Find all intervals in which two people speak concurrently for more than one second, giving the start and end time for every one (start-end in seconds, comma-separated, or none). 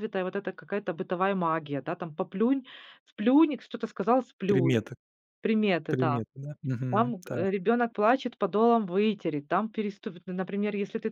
none